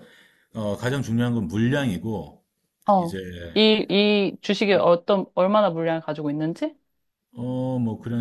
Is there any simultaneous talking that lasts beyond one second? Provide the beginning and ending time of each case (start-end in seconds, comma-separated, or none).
none